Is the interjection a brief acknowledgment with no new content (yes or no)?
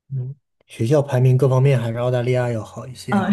no